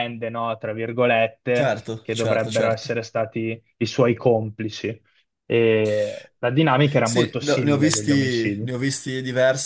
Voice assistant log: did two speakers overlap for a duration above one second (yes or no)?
yes